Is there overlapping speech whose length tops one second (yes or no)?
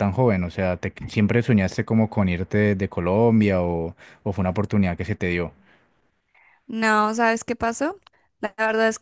no